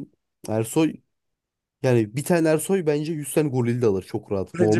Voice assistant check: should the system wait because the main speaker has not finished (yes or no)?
no